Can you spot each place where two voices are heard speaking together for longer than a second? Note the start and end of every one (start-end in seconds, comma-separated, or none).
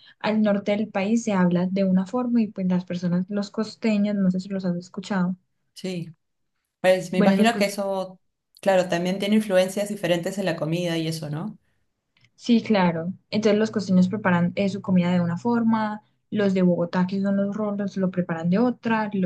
none